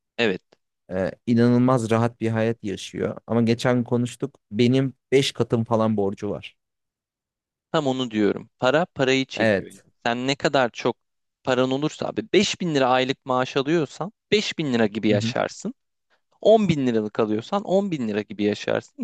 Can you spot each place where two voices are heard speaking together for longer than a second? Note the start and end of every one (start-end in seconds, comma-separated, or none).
none